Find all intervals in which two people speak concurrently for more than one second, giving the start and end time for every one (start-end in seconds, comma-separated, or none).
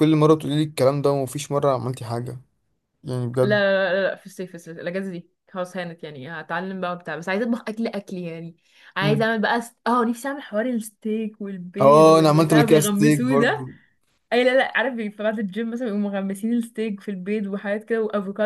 11.8-13.7